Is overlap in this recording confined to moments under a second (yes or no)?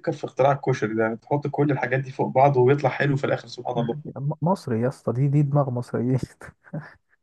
yes